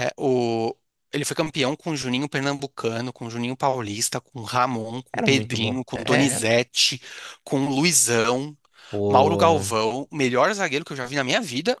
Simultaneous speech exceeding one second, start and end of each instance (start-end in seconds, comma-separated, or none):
5.1-6.4